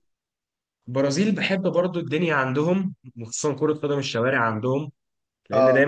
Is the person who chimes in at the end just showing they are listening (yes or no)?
yes